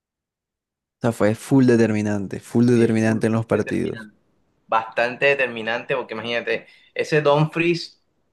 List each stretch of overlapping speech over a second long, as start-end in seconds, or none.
2.7-4.1